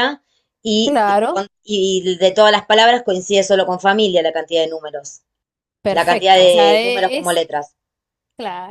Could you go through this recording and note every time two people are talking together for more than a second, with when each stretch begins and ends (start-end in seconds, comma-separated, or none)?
5.9-7.4